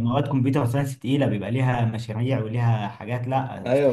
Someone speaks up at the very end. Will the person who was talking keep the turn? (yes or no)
no